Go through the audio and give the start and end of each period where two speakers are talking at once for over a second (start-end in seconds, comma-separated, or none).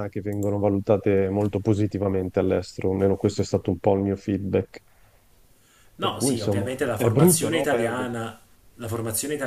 6.0-8.1